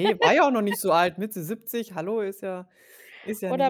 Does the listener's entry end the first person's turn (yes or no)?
yes